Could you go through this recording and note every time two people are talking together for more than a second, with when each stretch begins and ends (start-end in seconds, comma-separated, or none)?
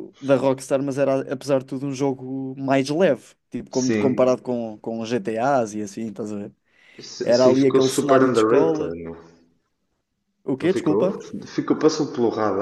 7.2-9.0